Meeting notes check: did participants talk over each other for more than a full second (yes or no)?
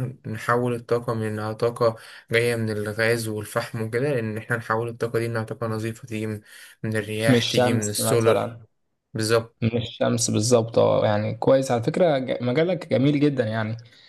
yes